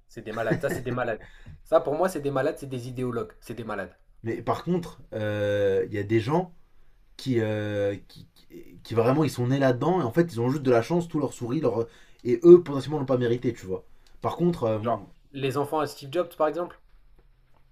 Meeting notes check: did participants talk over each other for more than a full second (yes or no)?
no